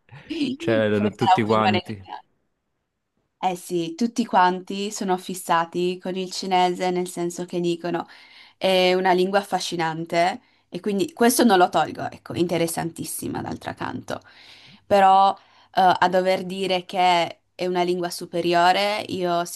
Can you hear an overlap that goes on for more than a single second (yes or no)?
yes